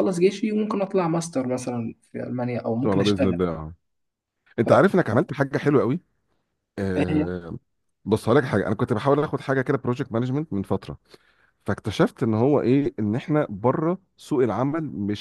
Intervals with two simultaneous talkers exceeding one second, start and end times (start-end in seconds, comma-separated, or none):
none